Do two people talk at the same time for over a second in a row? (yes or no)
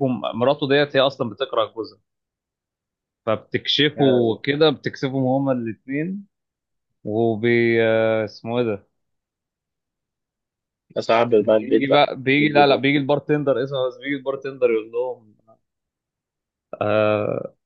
yes